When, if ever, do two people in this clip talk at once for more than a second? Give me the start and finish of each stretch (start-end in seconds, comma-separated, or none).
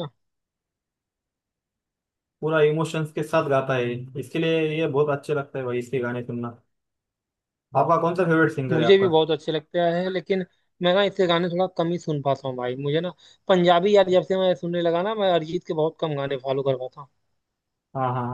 none